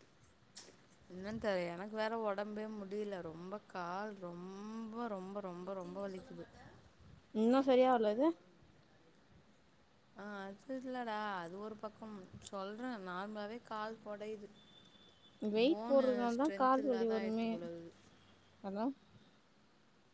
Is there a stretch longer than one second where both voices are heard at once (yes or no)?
yes